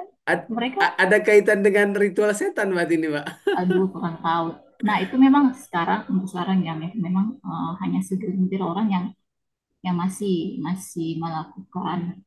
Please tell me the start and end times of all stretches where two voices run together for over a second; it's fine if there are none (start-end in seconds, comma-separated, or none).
none